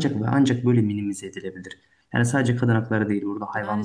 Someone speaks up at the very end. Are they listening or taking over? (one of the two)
taking over